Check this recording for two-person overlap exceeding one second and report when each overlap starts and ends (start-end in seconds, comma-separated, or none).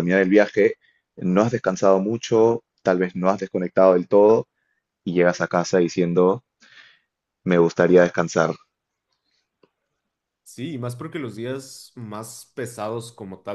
none